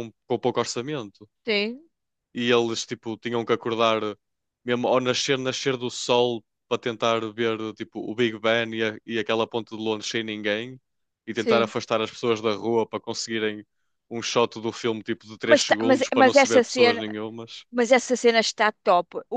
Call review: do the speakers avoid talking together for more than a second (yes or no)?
no